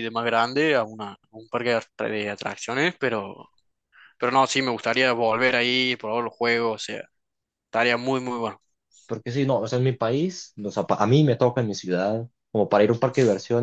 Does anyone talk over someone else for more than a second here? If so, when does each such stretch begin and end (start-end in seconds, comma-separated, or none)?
none